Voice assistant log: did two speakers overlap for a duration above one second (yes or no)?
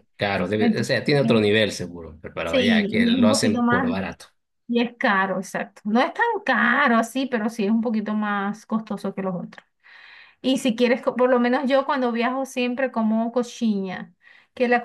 yes